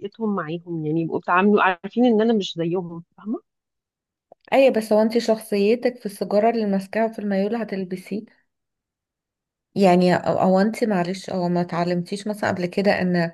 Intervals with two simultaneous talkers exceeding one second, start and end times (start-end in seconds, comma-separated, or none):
none